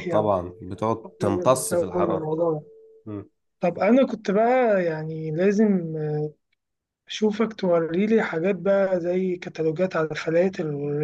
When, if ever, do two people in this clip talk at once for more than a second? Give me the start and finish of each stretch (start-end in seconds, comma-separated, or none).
0.8-2.3